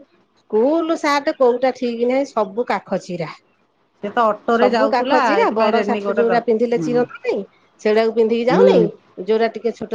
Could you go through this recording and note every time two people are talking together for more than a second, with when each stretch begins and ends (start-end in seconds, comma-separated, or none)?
4.6-7.0